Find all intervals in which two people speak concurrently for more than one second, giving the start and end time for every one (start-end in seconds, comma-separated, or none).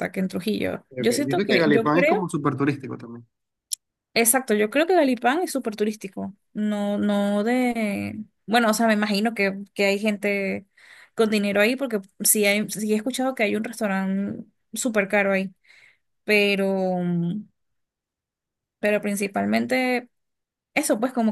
0.9-2.3